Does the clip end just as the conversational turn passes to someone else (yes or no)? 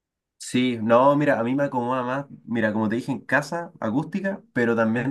no